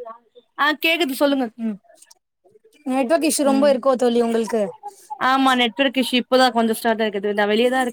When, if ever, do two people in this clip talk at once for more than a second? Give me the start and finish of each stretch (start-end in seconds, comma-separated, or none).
none